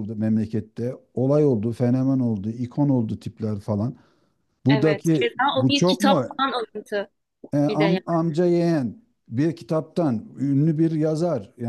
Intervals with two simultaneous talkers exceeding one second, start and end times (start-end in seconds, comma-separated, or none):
4.7-6.2